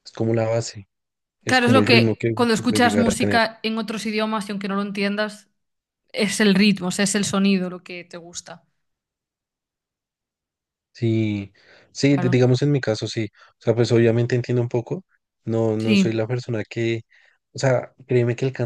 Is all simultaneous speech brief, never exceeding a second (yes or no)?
no